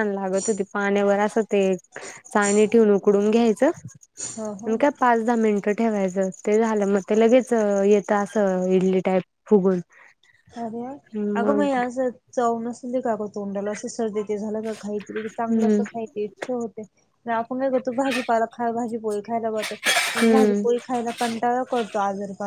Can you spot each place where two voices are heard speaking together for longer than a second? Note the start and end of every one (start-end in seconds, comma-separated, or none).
none